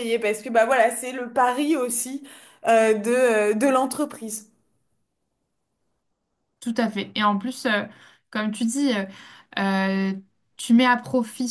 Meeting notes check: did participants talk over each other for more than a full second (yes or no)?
no